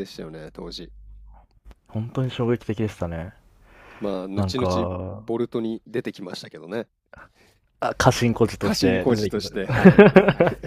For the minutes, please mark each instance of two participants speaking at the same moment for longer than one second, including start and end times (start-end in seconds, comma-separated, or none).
8.6-10.2